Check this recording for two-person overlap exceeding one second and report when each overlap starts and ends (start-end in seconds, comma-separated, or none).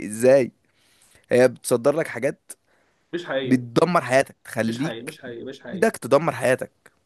4.7-5.9